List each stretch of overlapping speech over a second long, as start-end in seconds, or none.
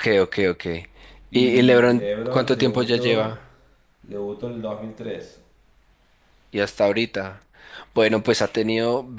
1.3-3.4